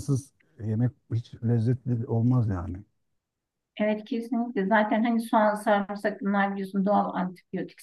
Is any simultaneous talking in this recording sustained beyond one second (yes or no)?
no